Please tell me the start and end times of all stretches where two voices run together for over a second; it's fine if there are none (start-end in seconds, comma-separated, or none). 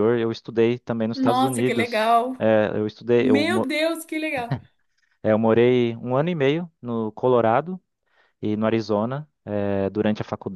1.1-2.5